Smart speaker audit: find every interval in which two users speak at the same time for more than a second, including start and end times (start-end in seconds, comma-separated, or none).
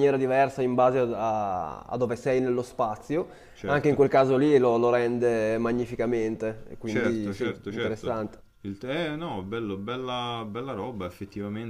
6.8-8.2